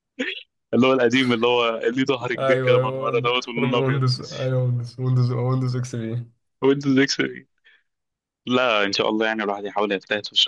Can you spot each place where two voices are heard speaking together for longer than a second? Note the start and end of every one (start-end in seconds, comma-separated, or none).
2.4-4.0